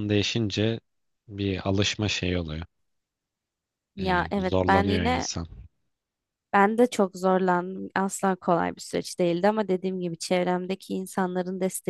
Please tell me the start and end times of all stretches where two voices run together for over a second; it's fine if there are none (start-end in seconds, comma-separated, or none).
4.0-5.3